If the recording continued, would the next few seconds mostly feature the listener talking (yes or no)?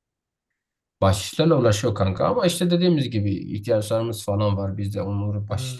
no